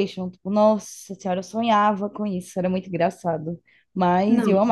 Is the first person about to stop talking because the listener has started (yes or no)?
no